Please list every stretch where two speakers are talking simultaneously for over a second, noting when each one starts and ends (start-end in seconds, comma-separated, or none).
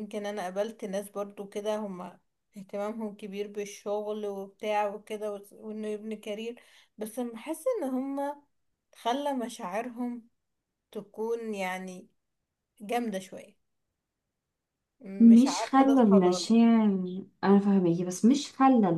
15.2-16.6